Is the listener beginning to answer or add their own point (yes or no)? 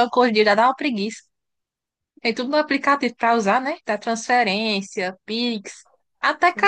no